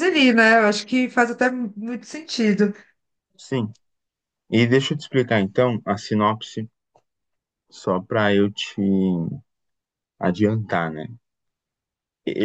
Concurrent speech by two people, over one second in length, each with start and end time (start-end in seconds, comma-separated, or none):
none